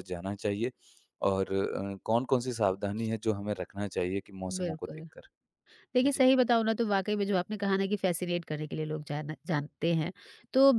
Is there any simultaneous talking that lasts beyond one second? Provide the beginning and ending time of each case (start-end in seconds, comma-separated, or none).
none